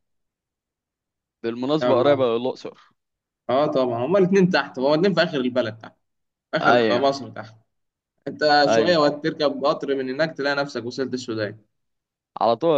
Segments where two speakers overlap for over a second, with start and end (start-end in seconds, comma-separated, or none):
none